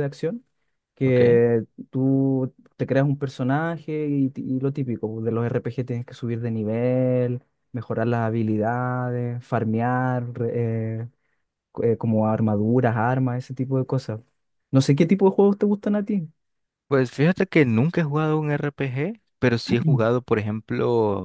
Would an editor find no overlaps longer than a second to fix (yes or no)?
yes